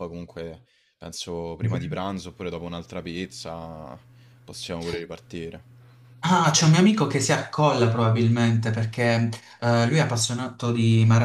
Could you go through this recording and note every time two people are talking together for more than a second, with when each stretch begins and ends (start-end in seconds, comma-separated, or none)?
none